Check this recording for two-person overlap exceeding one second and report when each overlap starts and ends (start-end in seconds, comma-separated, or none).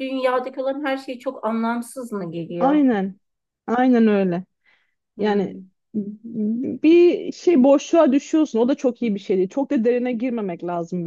none